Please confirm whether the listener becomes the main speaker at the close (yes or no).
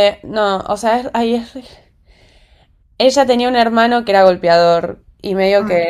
no